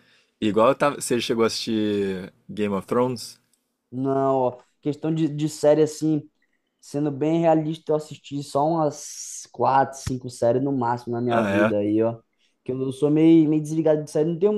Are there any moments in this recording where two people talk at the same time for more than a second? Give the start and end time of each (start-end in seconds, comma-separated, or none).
none